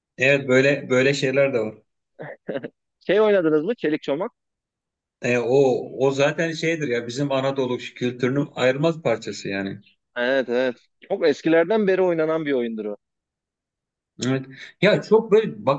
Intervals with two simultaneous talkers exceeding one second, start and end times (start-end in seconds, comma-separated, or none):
none